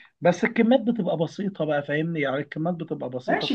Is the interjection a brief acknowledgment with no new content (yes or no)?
no